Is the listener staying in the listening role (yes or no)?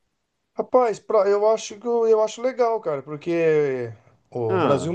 yes